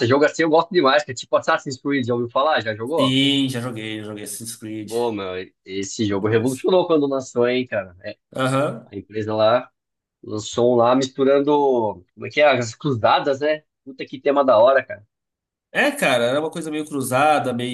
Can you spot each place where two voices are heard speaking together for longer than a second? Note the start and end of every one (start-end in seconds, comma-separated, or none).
none